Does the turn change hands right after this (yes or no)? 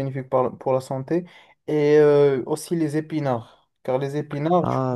no